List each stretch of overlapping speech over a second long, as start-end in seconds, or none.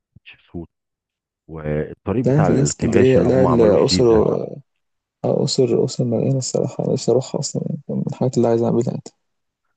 2.2-4.3